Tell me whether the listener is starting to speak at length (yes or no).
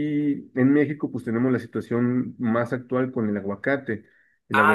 yes